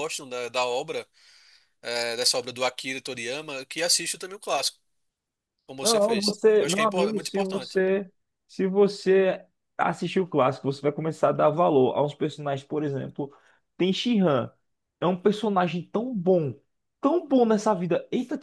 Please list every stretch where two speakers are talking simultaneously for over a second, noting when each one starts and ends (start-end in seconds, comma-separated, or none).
5.8-7.8